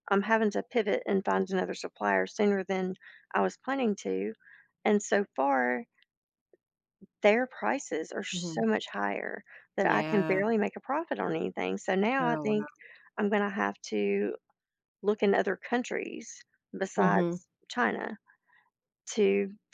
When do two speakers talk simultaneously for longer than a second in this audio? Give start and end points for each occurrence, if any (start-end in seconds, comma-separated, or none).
none